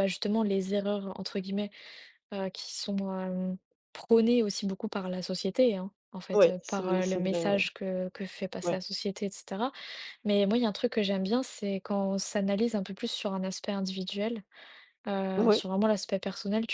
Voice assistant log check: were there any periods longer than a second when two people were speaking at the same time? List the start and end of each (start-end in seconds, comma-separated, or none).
6.3-7.6